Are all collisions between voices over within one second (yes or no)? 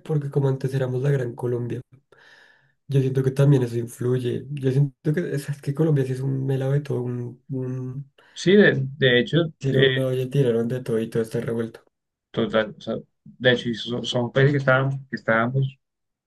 yes